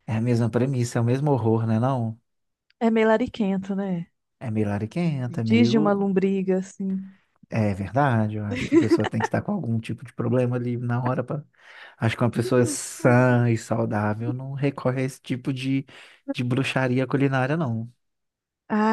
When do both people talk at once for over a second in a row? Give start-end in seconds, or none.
none